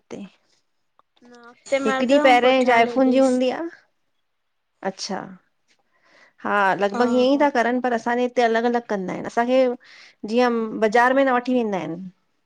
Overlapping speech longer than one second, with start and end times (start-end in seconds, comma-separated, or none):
1.9-3.3